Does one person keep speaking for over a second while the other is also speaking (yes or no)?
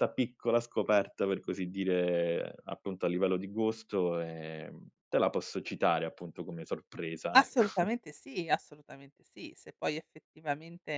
no